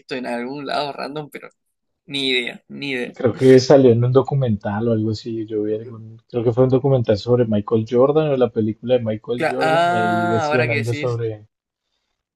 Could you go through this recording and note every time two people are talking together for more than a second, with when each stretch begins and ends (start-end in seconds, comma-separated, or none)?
9.3-11.2